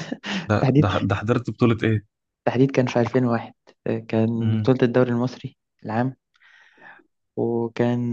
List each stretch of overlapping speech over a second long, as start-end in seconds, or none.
none